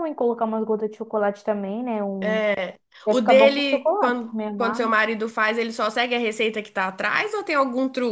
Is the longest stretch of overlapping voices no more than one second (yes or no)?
no